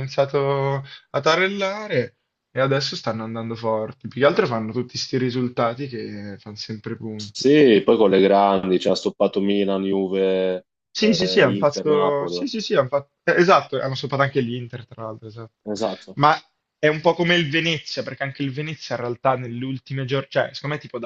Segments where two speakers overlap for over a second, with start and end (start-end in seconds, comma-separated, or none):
10.9-12.4